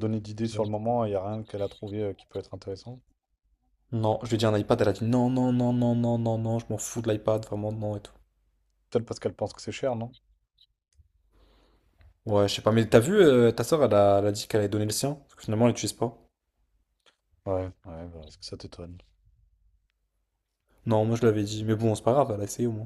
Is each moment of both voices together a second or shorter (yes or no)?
yes